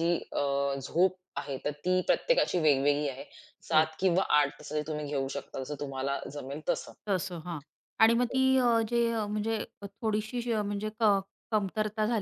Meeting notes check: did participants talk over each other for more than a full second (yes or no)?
no